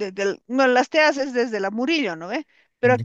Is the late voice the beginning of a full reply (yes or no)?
no